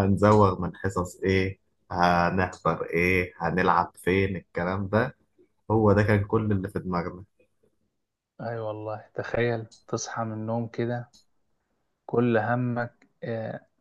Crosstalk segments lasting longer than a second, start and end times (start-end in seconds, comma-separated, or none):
none